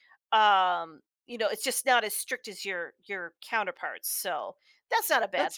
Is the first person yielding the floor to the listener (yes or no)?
yes